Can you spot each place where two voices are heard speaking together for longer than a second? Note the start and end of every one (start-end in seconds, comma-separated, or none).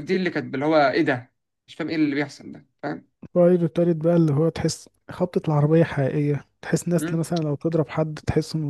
none